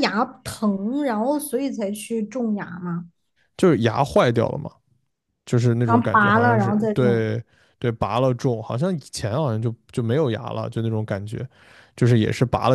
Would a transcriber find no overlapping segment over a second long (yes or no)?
no